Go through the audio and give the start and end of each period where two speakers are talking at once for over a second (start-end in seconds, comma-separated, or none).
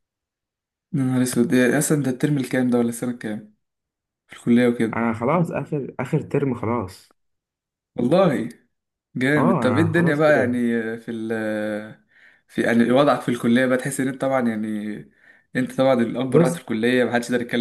9.4-10.6